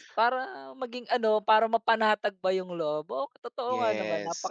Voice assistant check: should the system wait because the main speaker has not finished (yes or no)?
no